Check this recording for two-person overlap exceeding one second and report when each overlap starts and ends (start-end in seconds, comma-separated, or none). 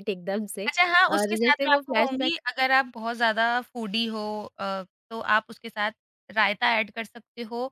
1.1-2.4